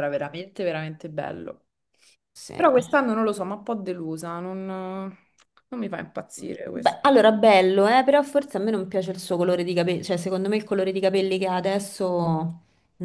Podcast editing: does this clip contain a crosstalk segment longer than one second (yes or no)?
no